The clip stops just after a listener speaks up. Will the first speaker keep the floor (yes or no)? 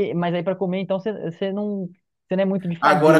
no